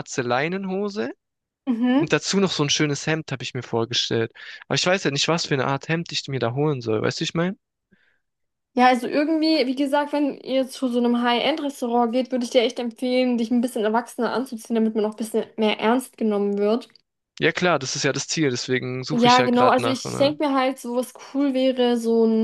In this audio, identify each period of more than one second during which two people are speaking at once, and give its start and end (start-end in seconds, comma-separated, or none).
19.1-20.3